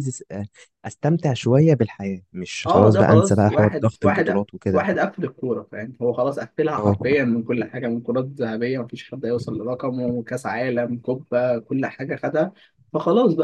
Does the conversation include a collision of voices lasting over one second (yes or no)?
yes